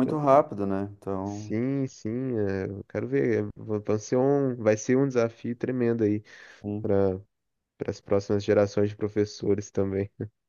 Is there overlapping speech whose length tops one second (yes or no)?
no